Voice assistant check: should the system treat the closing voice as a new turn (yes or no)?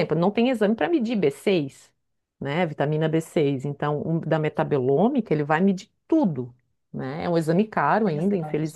no